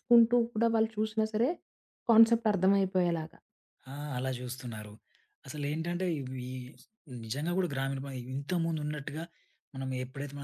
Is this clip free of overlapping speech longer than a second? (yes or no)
yes